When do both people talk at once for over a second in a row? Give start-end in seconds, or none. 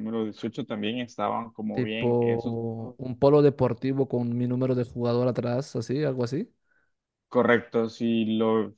1.7-3.0